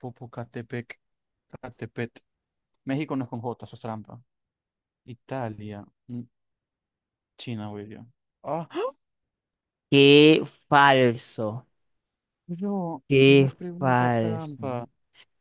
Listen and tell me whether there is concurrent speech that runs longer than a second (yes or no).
yes